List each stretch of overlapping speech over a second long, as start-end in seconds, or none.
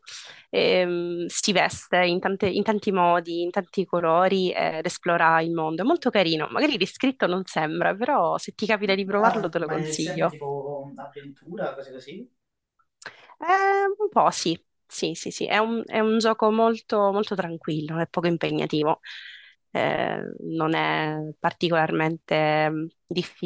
9.2-10.4